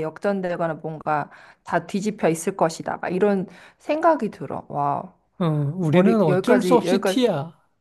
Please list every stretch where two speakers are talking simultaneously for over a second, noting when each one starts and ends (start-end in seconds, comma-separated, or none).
5.9-7.2